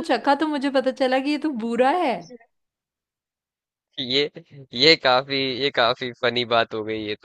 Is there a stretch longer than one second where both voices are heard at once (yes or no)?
no